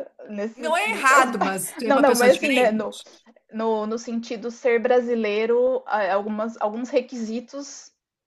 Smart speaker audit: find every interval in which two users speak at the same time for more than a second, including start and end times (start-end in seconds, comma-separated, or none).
0.5-2.9